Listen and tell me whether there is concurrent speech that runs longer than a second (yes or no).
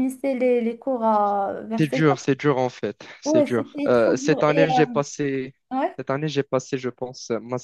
yes